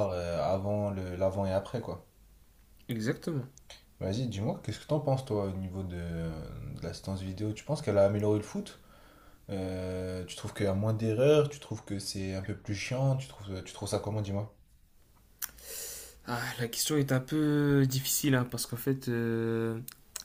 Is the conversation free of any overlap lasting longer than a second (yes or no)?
yes